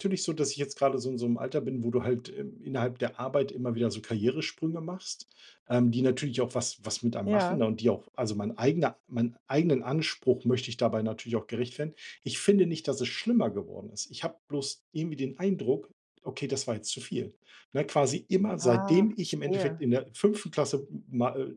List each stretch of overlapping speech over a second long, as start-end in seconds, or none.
18.6-19.8